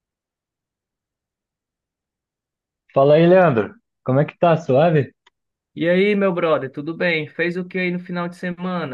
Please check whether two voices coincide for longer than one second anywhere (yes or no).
no